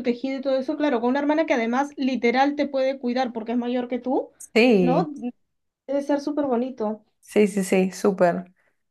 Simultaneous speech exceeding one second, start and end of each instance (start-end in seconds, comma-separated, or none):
none